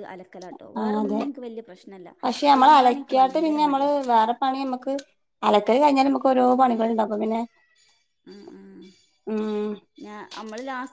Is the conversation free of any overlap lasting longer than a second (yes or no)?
no